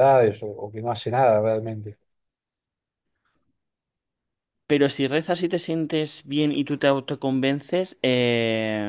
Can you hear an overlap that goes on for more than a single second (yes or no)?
no